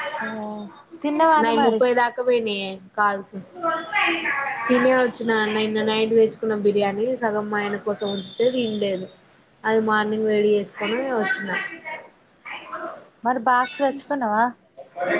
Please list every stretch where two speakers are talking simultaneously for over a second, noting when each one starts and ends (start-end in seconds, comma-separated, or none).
none